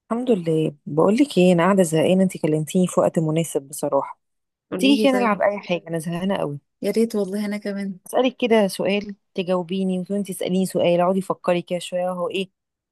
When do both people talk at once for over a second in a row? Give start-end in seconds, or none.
none